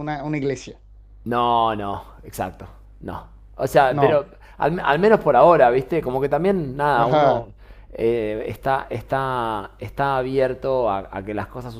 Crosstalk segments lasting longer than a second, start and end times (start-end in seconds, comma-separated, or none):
none